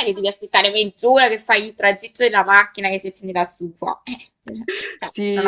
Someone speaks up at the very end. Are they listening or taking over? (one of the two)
taking over